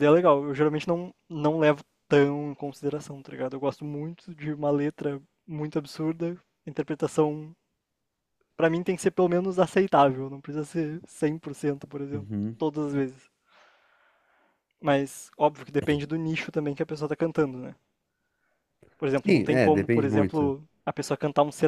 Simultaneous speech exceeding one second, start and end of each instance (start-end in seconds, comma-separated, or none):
19.2-20.5